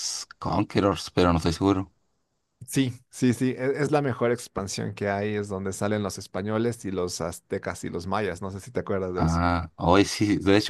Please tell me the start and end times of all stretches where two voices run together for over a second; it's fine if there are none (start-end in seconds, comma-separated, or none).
none